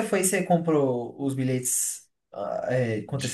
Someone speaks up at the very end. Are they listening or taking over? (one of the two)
taking over